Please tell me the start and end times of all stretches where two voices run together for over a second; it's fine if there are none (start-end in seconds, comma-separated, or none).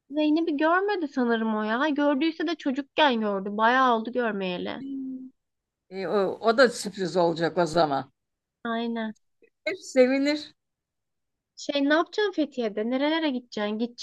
none